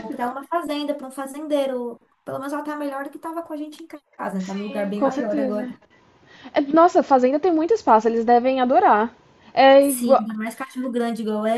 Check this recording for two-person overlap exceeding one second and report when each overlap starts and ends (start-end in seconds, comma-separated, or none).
4.4-5.7